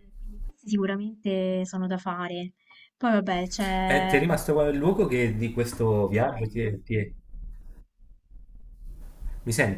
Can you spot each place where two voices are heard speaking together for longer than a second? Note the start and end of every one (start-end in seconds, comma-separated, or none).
none